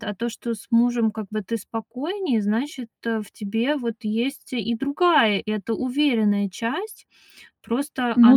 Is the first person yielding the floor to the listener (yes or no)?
no